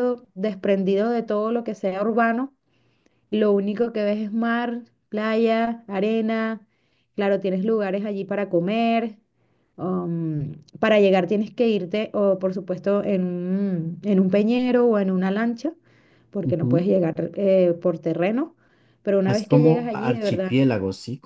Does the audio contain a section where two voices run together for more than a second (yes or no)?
yes